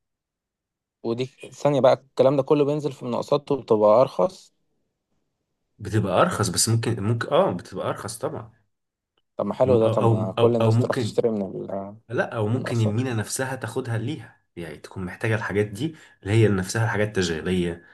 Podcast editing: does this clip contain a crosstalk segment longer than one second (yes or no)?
yes